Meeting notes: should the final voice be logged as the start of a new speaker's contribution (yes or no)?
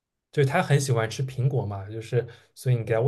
no